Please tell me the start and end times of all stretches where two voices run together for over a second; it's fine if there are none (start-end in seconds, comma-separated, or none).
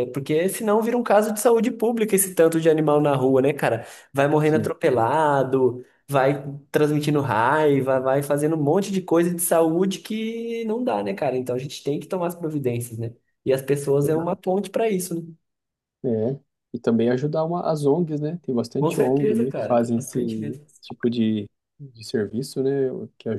18.8-20.2